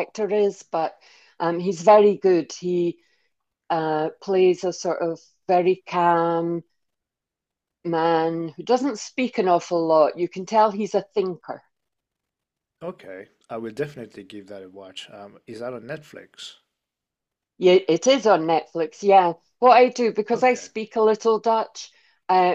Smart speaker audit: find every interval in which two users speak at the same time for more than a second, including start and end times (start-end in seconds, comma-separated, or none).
none